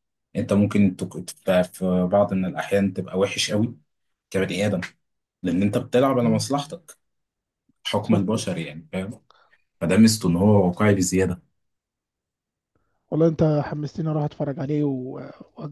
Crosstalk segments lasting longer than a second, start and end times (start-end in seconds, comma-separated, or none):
none